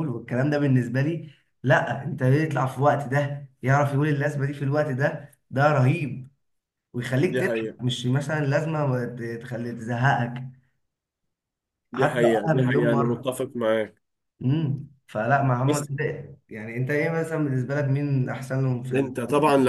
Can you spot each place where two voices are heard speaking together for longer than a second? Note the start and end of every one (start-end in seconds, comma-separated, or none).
12.0-13.3